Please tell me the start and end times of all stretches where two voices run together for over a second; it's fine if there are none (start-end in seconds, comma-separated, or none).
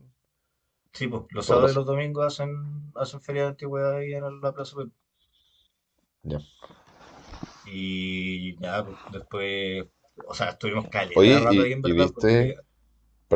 11.1-12.5